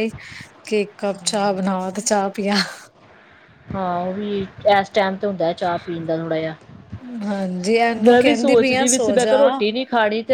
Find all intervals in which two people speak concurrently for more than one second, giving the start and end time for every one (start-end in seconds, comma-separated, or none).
8.1-9.4